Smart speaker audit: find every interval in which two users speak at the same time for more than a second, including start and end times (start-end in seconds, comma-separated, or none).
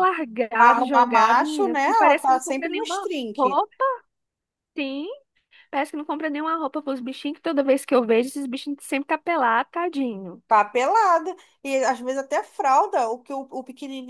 0.6-3.5